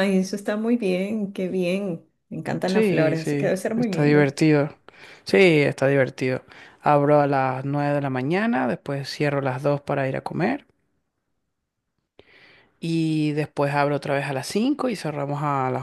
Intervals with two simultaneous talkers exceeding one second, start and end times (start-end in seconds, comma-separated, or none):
2.7-4.3